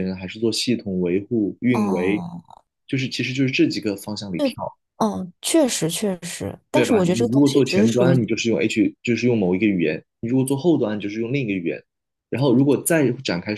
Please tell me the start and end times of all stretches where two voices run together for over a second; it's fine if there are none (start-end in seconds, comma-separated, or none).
6.7-8.2